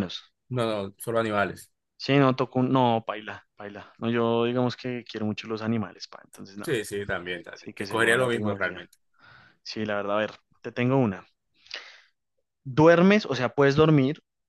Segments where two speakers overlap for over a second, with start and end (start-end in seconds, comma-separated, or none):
7.5-8.9